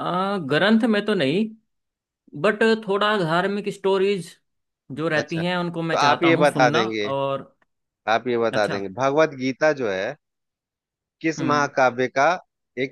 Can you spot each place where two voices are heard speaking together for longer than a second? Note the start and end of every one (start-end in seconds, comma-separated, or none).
5.2-7.1